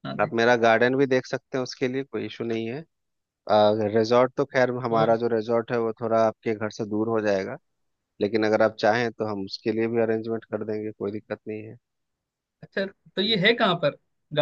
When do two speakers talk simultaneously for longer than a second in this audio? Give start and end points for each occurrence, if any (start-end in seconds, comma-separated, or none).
none